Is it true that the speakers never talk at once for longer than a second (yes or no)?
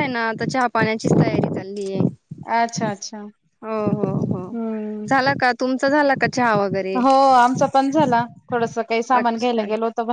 yes